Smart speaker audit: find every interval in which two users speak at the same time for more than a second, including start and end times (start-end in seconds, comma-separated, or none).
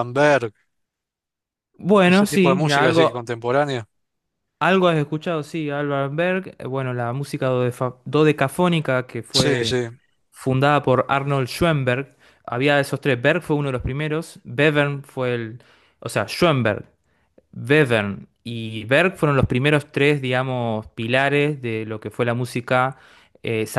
2.0-3.2